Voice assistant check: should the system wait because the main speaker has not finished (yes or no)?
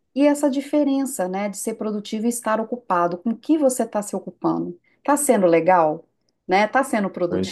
yes